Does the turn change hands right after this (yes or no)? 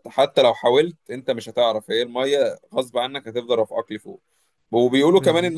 no